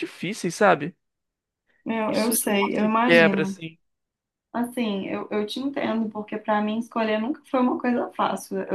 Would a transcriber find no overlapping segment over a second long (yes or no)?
no